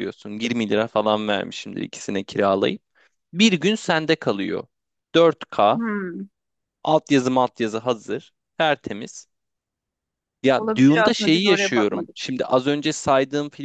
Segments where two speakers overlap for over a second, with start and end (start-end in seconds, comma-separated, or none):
10.6-12.2